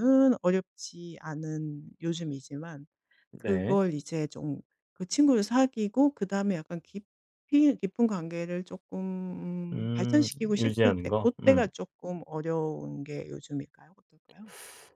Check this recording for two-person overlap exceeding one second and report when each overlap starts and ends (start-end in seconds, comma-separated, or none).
9.7-11.7